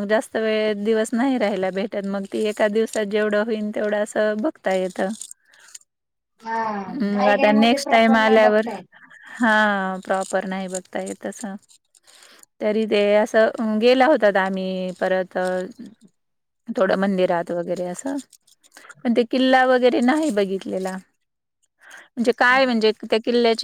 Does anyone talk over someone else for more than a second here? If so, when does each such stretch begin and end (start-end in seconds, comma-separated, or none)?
6.9-8.7